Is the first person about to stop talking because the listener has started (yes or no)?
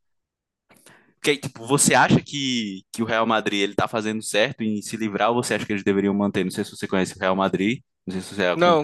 yes